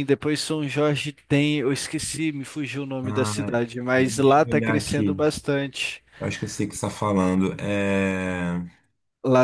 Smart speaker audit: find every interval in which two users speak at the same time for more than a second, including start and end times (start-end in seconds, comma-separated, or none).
4.0-5.2